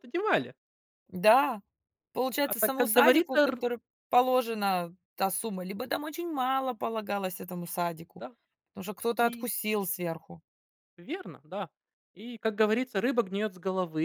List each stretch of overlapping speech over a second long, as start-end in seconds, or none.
2.4-3.6